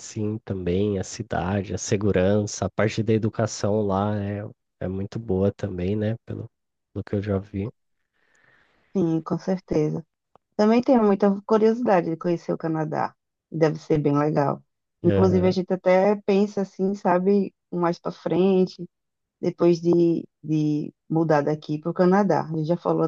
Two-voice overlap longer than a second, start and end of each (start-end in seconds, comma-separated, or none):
none